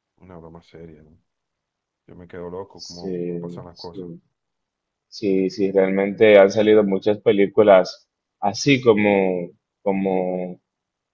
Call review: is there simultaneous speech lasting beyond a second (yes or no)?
yes